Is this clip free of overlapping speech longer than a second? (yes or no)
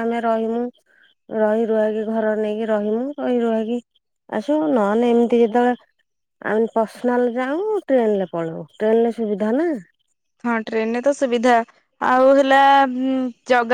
yes